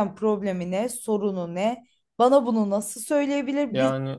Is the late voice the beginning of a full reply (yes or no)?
no